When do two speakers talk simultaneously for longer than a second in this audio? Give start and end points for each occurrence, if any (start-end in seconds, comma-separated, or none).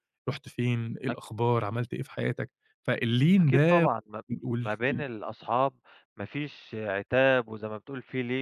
none